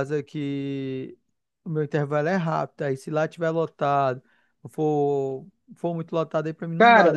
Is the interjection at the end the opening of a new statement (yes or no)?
yes